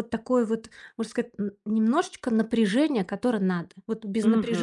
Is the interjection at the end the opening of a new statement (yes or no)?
no